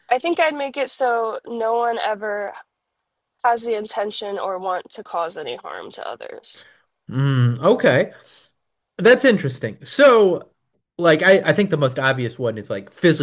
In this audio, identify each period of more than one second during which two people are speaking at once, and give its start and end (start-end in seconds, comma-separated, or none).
none